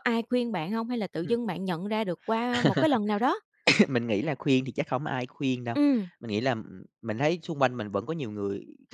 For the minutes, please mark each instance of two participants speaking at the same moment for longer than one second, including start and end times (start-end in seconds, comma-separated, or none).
none